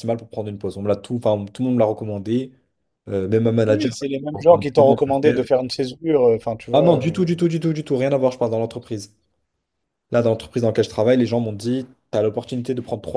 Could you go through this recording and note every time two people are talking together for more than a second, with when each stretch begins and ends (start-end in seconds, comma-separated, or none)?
3.7-5.5